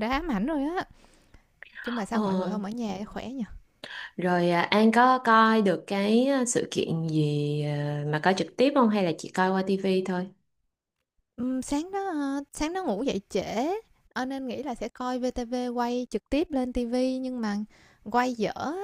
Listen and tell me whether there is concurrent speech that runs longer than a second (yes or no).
no